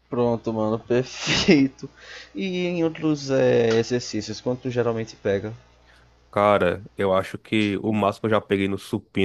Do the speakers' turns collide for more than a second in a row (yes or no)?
no